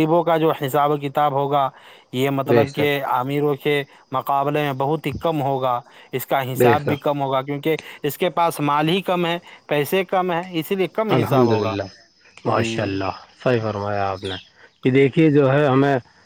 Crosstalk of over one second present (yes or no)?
no